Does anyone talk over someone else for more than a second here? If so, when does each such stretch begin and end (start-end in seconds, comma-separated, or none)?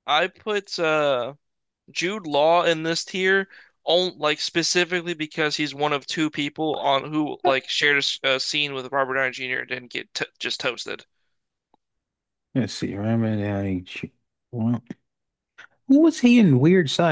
none